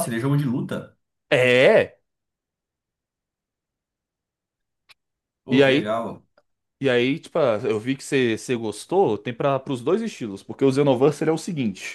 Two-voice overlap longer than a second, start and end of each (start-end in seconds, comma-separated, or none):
none